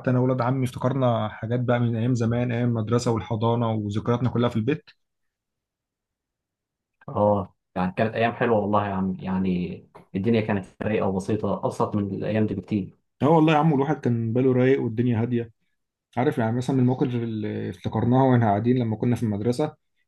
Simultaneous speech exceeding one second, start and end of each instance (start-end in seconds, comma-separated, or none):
none